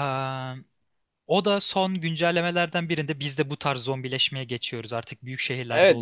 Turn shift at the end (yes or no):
yes